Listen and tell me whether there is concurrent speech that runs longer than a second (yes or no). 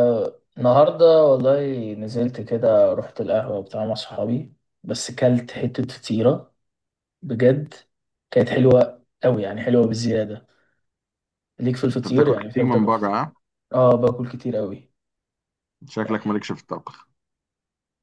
yes